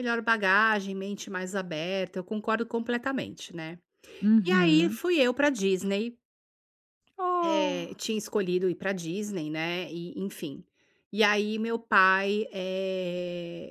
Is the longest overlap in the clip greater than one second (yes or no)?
no